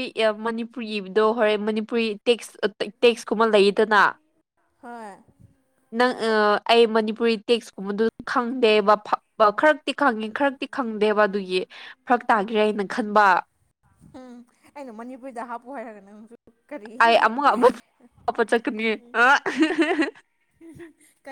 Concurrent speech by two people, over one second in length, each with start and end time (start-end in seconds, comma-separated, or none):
none